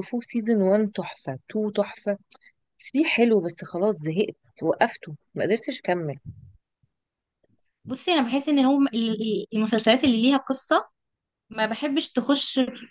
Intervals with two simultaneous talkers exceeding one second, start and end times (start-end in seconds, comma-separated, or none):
none